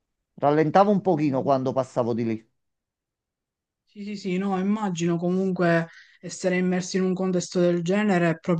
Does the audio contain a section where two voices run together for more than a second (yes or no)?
no